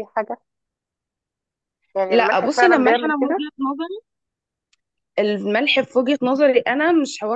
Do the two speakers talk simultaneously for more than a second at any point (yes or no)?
yes